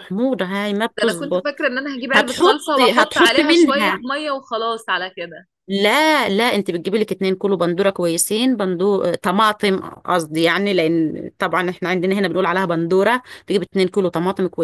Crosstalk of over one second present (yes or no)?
yes